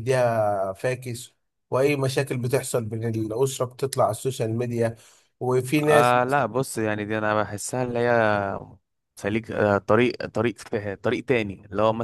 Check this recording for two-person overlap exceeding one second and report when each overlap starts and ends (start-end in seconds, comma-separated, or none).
none